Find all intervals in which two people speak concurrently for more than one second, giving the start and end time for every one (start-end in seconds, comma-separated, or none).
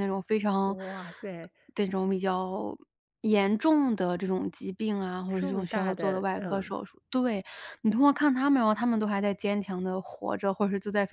5.3-6.7